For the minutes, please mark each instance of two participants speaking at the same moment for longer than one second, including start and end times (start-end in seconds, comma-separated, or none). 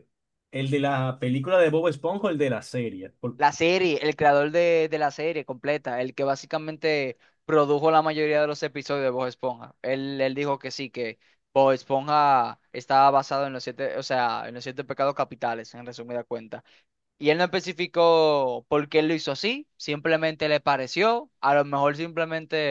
none